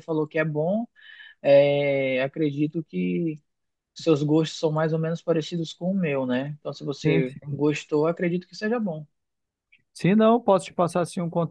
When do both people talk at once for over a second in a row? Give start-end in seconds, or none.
none